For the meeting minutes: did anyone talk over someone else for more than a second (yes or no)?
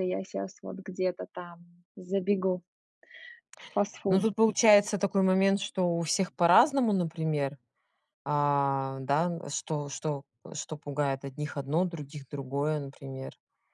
no